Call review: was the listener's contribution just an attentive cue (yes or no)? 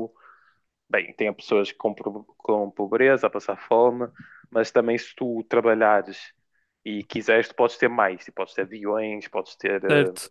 no